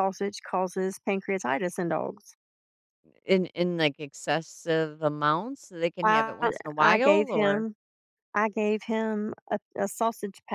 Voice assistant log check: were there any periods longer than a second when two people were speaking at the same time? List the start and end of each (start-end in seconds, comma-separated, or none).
6.0-7.7